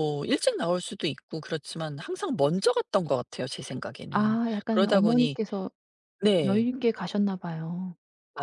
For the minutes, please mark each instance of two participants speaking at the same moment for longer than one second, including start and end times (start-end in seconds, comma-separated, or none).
4.1-5.4